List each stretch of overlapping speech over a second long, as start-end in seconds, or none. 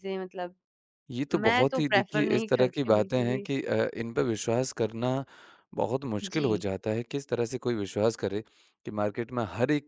1.3-3.5